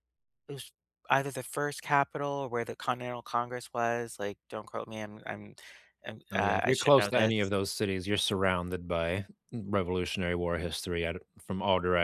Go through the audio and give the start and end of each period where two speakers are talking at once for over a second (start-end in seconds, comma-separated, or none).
6.3-7.5